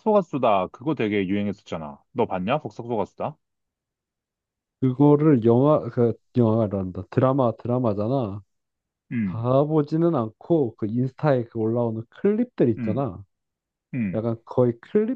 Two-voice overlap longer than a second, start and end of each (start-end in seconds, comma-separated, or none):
none